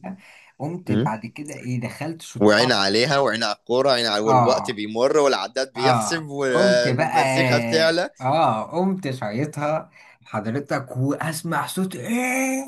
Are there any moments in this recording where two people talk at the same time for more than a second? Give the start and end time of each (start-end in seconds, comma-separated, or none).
5.8-7.2